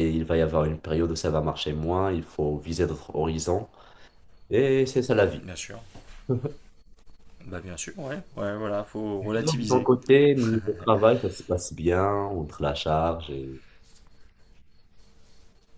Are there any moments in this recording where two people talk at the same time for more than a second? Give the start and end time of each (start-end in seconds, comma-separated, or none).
none